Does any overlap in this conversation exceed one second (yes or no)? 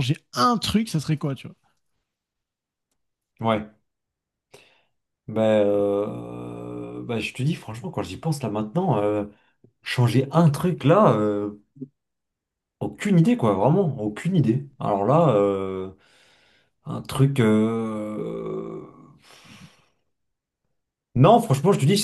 no